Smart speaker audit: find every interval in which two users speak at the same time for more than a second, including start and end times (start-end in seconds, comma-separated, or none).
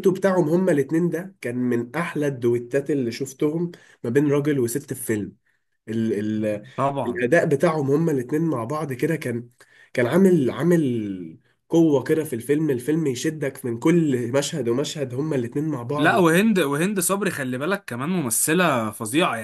none